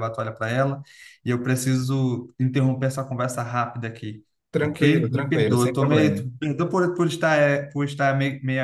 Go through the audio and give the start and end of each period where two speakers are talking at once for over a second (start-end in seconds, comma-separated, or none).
4.6-6.2